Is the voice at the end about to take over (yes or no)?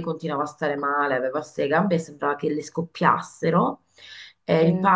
no